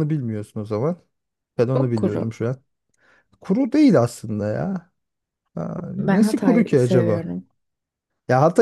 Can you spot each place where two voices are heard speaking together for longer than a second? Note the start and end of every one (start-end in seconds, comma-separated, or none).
6.0-7.3